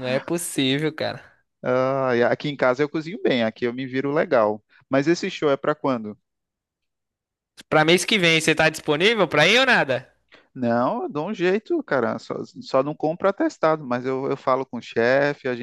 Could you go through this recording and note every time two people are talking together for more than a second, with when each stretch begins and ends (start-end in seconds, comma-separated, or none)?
none